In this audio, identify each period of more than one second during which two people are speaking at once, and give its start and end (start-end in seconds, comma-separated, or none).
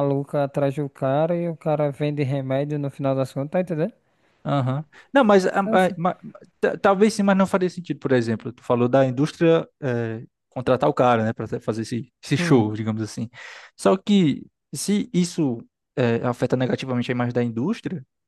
none